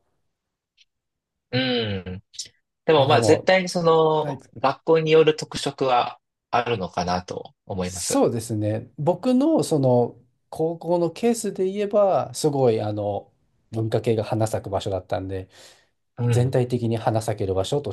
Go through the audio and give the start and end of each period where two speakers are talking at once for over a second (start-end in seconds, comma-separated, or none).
none